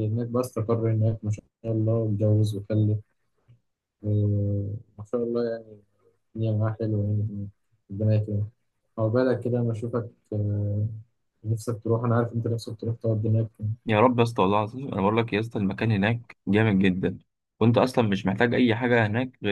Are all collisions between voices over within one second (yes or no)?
yes